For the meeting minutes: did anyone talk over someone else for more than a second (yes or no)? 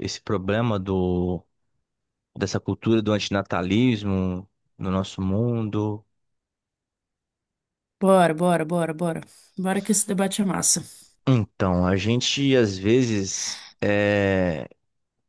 no